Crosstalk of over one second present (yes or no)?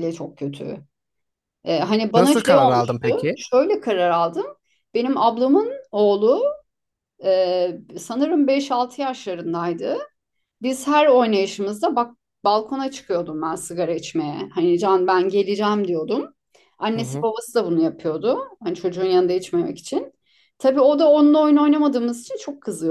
yes